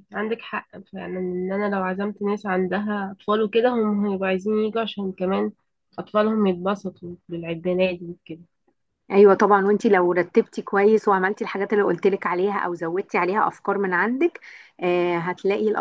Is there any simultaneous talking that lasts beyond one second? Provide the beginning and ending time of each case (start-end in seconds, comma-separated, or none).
none